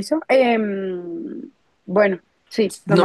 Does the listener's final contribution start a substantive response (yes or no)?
yes